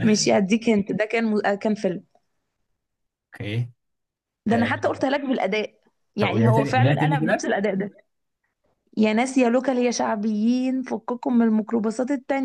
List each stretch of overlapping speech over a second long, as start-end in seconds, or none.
6.2-7.5